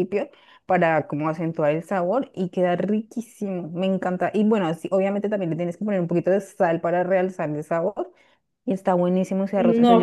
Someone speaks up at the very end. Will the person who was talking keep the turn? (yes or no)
no